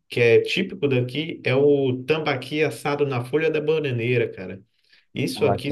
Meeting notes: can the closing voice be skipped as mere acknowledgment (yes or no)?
yes